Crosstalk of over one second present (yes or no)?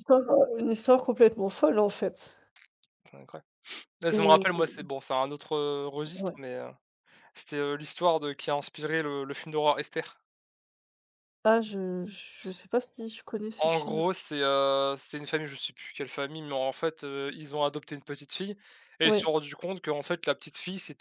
no